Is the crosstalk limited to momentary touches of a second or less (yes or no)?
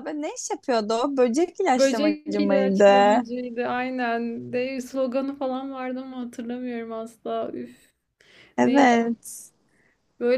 no